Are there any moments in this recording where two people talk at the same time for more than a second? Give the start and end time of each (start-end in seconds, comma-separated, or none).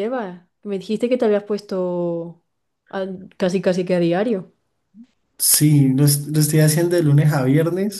none